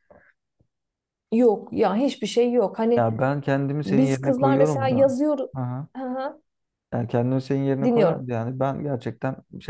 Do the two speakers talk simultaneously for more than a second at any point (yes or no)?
yes